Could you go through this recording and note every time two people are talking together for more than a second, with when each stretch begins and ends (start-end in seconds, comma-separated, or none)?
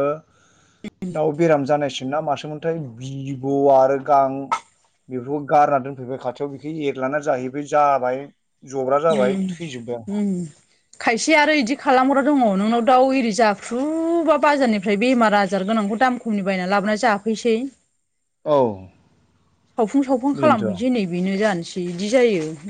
none